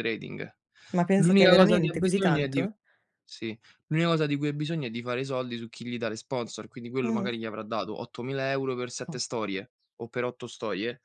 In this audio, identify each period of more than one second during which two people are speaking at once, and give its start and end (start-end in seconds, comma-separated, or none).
1.2-2.7